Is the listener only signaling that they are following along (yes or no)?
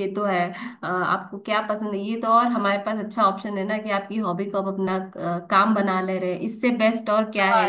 no